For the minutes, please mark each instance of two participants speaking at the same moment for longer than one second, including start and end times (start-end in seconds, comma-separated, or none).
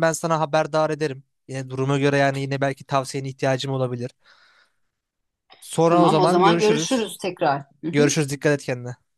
5.8-7.1